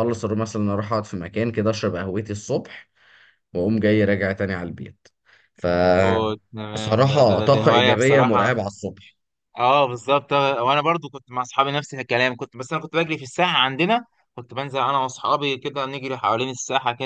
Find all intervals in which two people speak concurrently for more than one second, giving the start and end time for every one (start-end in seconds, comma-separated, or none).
6.7-8.4